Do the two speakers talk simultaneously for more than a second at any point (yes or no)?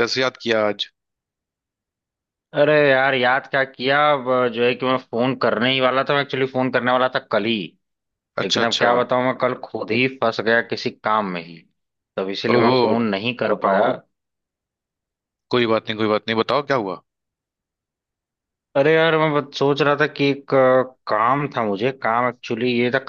no